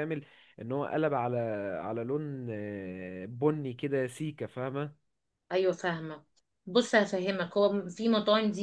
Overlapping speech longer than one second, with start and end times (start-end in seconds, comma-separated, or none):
none